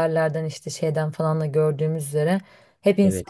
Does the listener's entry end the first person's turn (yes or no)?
no